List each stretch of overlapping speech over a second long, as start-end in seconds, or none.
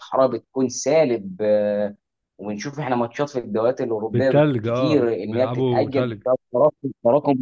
4.1-6.2